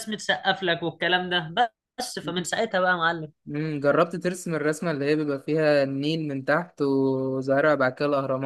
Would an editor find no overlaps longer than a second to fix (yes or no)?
yes